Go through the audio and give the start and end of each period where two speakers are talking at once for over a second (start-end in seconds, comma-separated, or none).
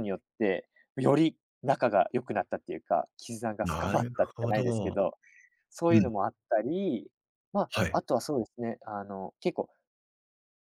3.6-5.0